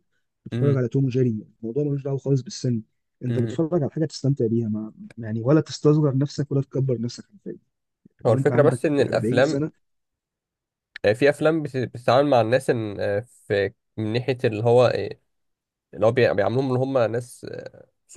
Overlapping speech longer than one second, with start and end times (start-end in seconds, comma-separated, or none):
8.2-9.6